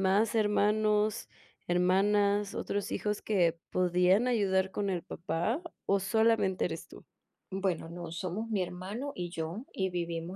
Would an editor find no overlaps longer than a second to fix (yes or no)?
yes